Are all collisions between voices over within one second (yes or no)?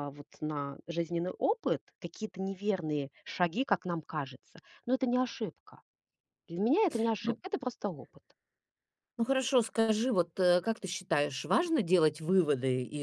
yes